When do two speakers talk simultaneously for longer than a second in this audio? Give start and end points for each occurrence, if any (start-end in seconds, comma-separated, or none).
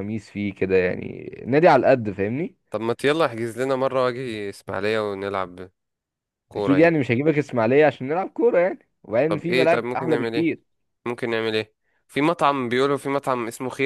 9.3-10.5